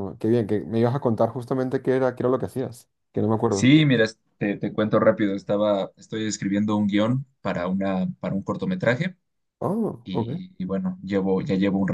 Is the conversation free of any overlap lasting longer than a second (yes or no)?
yes